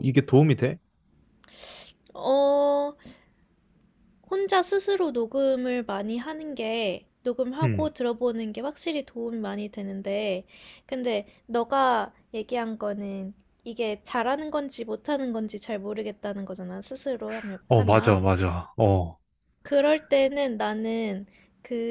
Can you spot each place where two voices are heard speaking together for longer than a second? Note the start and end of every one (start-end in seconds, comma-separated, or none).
none